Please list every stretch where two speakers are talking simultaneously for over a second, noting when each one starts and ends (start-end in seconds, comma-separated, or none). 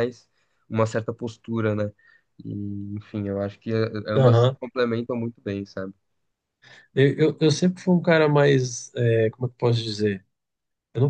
none